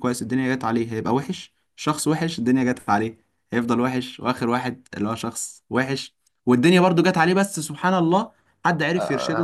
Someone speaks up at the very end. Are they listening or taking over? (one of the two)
listening